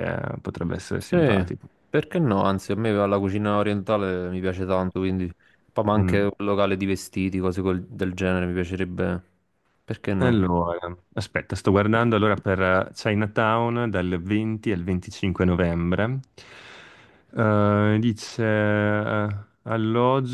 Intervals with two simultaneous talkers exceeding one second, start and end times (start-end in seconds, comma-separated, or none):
none